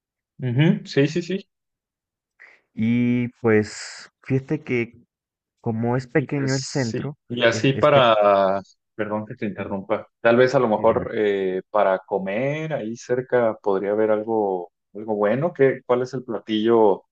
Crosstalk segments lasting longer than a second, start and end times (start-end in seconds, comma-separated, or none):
6.1-8.1